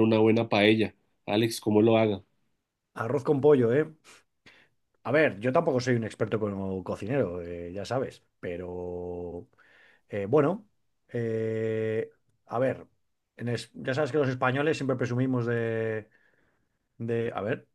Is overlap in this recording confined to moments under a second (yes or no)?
yes